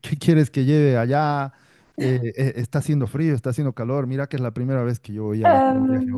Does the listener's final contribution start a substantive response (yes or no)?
yes